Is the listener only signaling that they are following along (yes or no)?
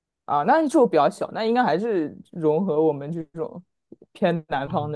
no